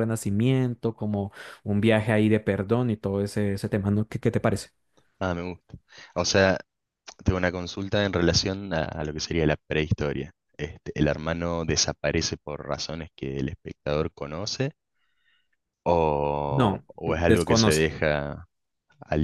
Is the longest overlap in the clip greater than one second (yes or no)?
yes